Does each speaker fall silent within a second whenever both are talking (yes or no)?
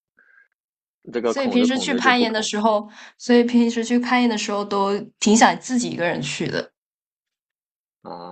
no